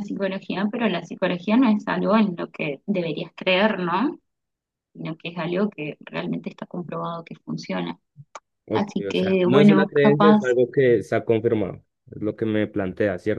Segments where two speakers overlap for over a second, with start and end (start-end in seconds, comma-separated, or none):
8.7-10.4